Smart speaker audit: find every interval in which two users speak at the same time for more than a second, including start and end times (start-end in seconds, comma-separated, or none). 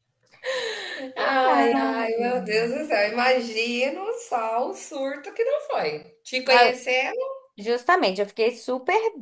none